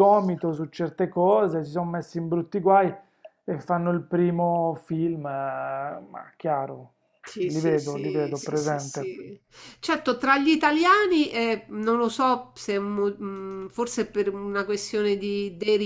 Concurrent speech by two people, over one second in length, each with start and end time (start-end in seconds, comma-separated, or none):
7.4-9.1